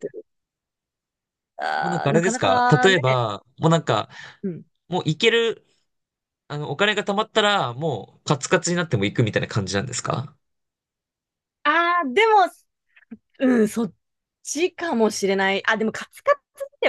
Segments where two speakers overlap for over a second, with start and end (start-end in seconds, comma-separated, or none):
1.8-3.2